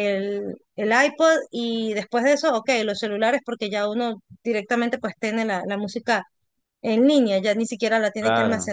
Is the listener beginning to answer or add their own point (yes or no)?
yes